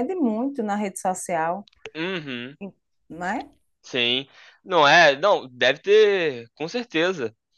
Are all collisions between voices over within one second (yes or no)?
yes